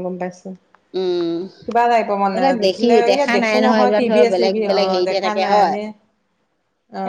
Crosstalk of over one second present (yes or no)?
yes